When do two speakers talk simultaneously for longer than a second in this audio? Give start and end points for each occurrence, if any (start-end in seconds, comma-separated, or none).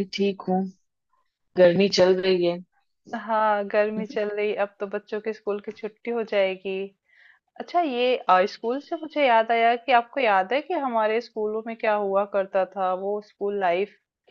none